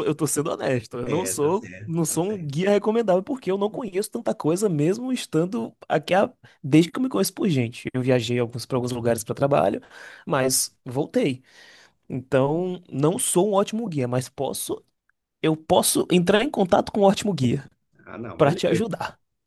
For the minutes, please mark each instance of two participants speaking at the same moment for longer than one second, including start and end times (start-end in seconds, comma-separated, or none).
1.0-2.5